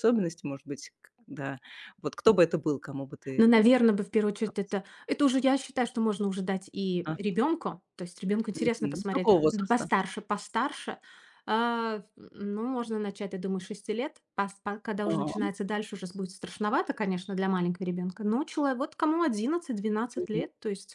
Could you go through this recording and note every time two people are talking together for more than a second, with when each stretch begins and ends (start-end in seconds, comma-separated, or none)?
8.5-9.9